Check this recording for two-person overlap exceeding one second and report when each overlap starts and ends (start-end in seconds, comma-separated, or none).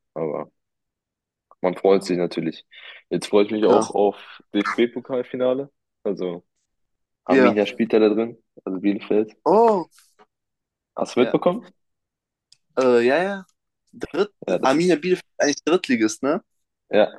none